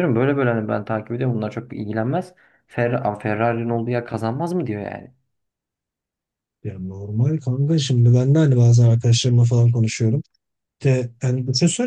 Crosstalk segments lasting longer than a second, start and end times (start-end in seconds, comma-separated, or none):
none